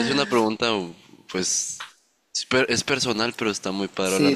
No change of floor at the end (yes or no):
no